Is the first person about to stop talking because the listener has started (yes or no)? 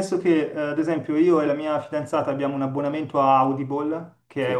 no